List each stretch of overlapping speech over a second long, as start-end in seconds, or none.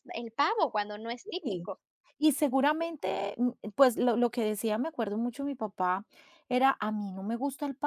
none